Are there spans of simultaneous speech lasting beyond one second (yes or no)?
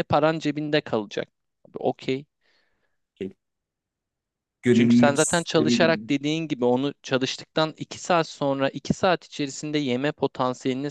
yes